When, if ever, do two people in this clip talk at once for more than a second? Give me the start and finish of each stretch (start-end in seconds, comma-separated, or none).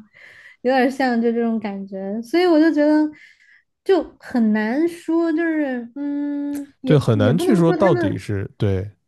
6.8-8.2